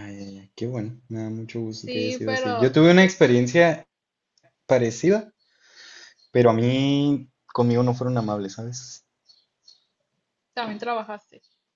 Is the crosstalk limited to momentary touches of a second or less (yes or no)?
no